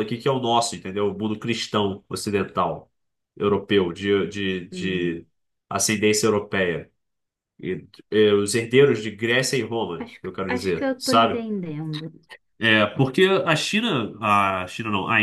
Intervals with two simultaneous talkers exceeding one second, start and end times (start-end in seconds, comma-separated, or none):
10.0-11.4